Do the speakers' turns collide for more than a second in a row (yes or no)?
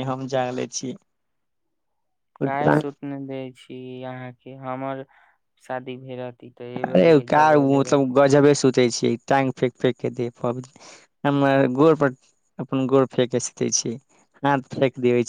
no